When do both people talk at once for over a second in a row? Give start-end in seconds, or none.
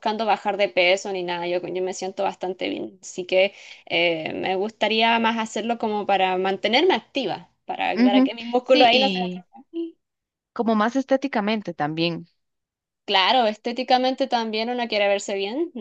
7.9-9.4